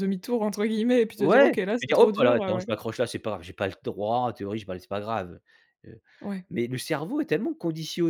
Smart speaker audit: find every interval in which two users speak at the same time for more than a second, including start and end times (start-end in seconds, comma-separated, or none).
1.2-2.7